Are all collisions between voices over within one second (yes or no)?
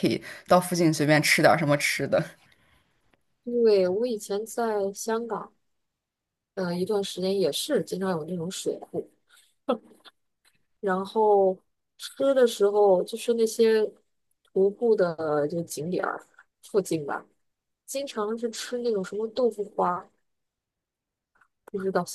yes